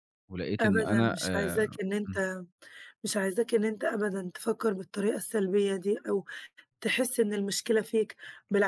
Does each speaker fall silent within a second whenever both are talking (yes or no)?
no